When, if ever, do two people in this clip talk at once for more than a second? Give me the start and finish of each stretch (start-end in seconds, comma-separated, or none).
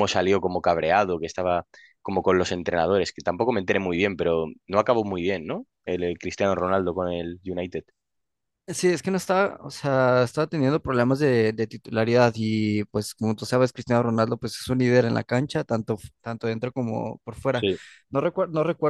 none